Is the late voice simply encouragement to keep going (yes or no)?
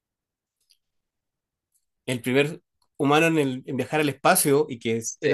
yes